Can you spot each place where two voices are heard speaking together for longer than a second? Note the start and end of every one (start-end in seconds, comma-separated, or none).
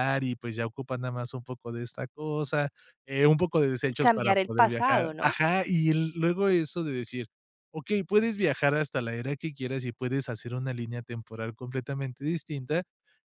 3.9-5.3